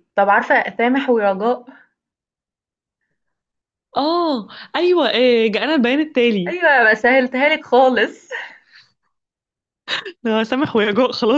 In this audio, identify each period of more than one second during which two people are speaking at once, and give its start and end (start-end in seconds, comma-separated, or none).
none